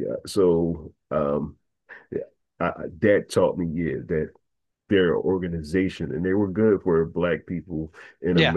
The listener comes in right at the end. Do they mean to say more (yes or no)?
no